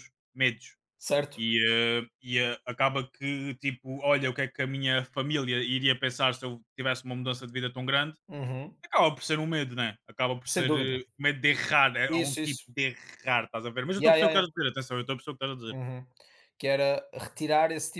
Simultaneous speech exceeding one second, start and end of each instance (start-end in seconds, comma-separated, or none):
none